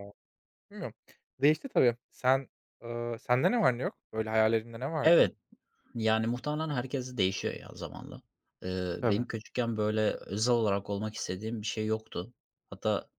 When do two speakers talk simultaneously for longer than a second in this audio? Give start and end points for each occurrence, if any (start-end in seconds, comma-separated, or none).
none